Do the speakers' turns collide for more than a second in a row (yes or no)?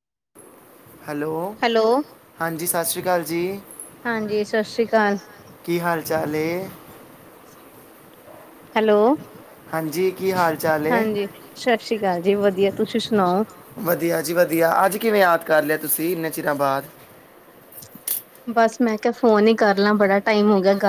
no